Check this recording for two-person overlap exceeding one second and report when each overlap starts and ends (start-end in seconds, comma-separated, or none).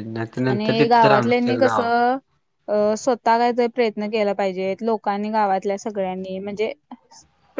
0.5-1.9